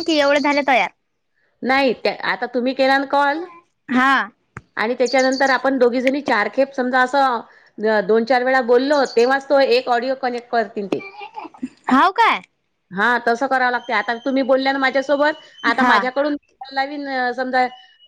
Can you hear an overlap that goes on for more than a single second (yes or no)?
no